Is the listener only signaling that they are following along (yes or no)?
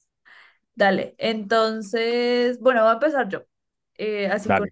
yes